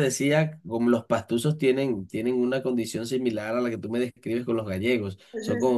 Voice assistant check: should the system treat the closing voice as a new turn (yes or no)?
no